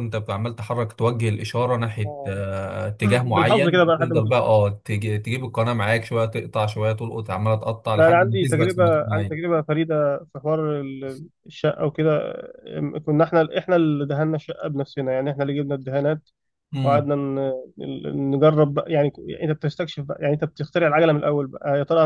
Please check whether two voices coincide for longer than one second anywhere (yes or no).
yes